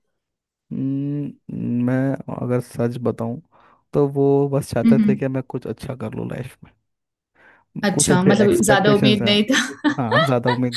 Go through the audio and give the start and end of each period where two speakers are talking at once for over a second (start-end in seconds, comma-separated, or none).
7.9-9.3